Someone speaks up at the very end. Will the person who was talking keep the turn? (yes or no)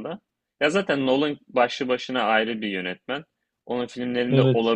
yes